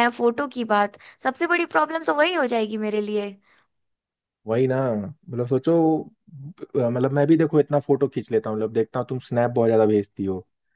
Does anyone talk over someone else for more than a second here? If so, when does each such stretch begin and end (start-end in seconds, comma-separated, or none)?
none